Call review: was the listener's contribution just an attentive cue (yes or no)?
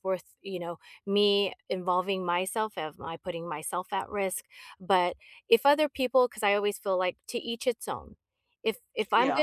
no